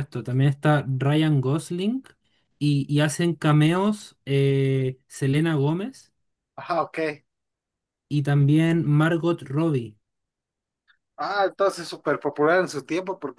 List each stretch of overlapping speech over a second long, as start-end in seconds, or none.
none